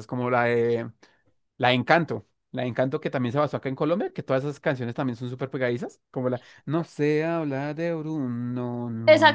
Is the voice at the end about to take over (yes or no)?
yes